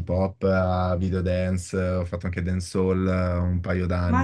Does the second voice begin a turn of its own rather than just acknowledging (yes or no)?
yes